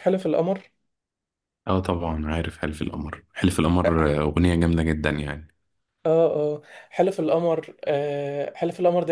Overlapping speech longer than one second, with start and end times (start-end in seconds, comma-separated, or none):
none